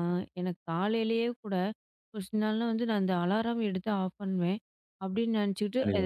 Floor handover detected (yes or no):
no